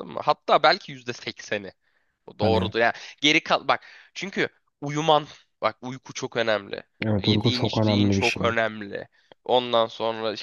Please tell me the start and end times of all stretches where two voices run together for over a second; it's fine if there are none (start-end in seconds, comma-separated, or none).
7.2-8.5